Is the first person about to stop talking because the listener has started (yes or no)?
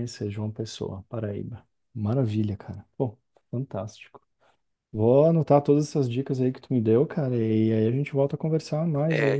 yes